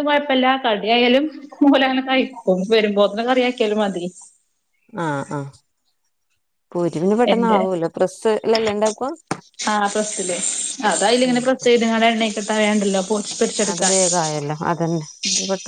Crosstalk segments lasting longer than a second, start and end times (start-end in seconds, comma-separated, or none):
none